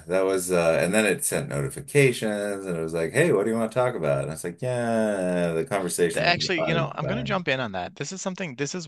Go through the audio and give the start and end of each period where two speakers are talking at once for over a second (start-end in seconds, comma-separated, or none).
6.1-7.4